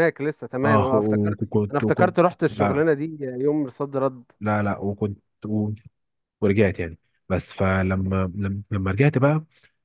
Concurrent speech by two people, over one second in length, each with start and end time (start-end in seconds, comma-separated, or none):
0.6-2.8